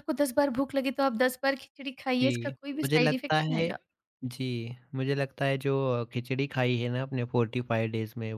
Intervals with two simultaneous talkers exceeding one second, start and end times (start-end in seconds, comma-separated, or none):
2.2-3.7